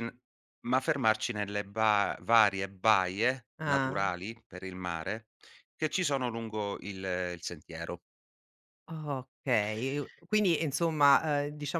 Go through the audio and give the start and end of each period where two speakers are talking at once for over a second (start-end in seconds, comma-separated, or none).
none